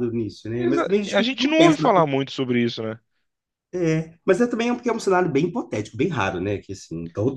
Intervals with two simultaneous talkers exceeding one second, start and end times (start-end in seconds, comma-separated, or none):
0.6-1.9